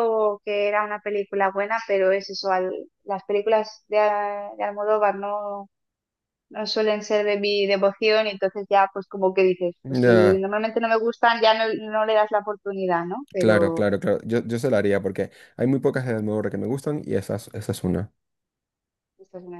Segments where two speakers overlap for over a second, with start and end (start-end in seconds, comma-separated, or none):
none